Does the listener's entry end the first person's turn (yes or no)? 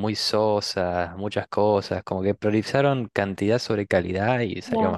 yes